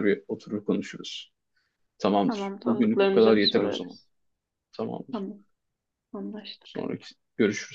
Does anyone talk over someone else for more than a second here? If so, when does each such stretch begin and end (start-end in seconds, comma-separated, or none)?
2.2-4.0